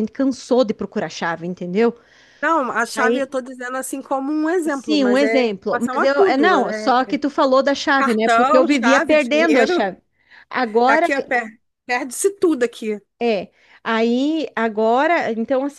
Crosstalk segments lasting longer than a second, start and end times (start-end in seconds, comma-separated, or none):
4.7-7.0, 8.0-9.9